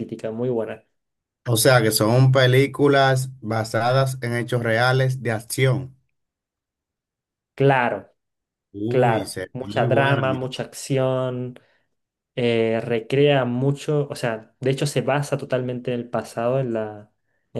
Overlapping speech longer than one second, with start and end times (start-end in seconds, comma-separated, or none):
8.9-10.4